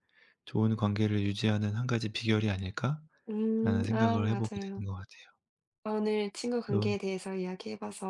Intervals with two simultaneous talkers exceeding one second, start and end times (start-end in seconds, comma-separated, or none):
3.3-4.8